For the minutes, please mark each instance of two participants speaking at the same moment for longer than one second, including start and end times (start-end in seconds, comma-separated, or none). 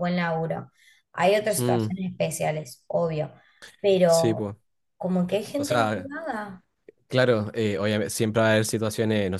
none